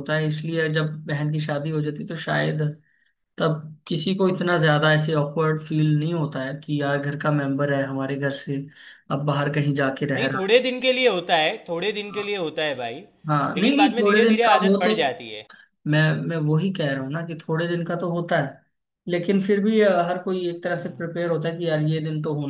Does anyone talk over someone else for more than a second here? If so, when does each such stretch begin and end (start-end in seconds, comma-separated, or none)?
13.3-14.9